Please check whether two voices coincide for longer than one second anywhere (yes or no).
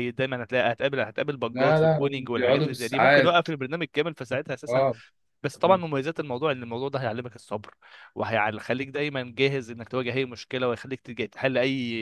yes